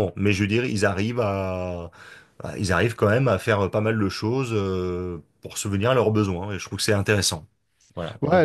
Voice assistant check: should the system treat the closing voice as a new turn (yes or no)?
yes